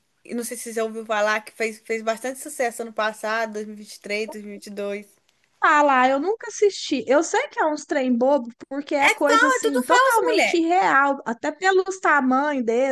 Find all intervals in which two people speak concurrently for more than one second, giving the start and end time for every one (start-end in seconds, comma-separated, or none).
9.0-10.6